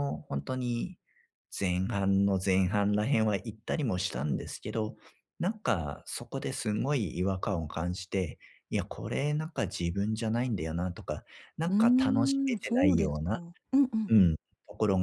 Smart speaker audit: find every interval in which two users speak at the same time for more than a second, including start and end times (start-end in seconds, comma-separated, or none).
11.7-13.4